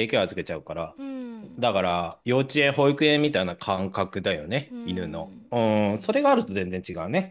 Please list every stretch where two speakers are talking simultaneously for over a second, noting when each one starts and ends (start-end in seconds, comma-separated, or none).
4.7-6.3